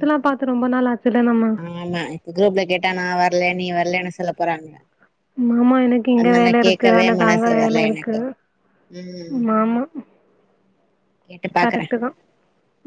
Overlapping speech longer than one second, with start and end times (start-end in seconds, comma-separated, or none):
6.2-8.2